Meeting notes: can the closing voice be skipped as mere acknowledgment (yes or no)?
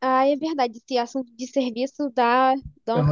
yes